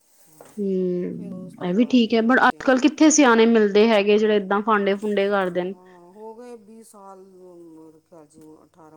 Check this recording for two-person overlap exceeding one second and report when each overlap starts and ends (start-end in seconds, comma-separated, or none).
1.1-2.8